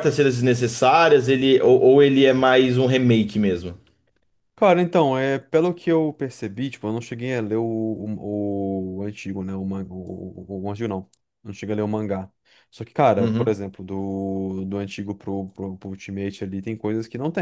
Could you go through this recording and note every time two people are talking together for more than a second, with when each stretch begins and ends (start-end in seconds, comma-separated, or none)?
none